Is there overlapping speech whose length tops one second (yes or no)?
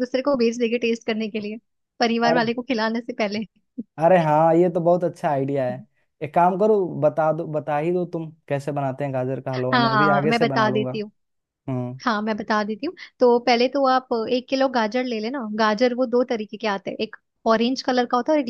yes